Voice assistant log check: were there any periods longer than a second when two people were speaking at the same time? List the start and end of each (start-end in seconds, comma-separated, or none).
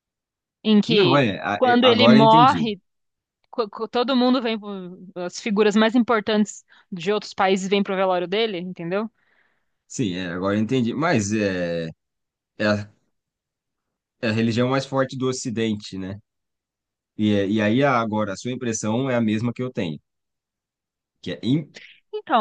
0.9-2.7